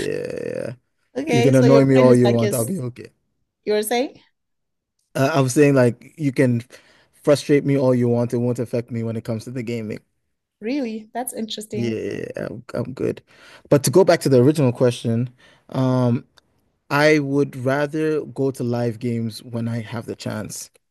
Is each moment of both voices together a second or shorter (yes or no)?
no